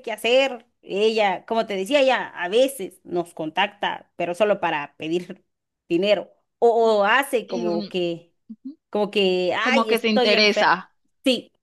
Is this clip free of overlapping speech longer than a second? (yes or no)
no